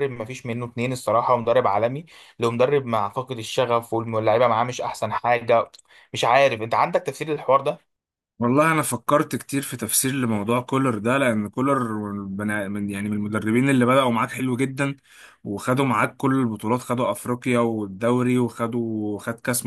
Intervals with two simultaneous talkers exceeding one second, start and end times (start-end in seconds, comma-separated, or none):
none